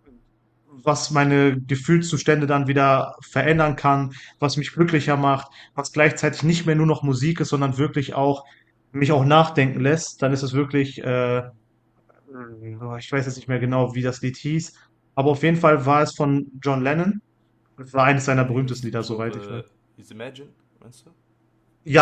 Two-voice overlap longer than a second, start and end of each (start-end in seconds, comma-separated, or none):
18.3-19.6